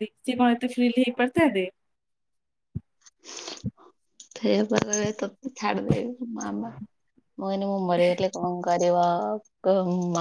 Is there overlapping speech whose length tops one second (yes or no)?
no